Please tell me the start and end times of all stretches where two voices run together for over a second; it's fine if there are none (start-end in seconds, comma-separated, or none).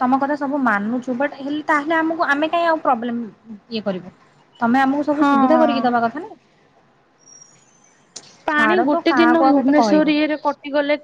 8.5-10.1